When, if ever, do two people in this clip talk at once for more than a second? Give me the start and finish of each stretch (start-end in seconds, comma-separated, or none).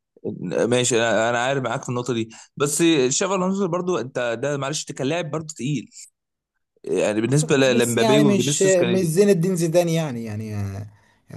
7.8-9.2